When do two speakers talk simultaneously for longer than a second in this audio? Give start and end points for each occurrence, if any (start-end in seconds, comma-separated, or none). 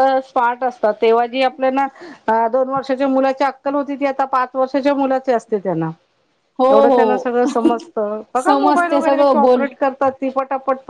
8.4-9.6